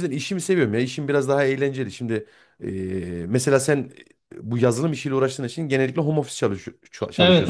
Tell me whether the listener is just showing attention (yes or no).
no